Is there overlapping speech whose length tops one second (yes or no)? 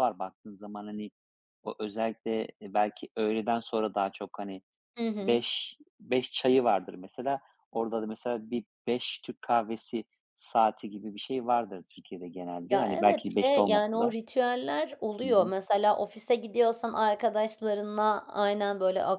yes